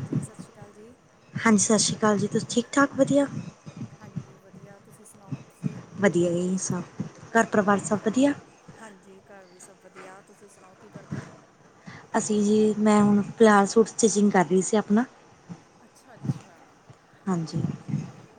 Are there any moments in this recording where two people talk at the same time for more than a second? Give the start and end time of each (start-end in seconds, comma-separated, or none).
none